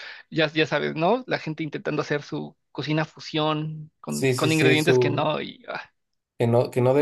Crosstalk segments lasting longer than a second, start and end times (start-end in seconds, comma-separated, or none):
4.1-5.3